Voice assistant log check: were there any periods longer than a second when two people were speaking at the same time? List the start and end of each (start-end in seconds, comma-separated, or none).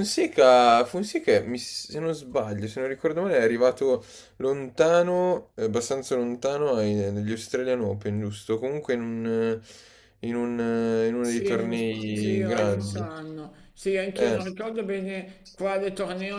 11.2-13.1